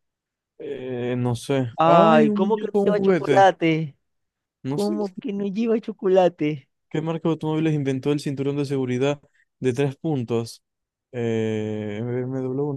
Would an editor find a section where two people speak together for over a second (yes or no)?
yes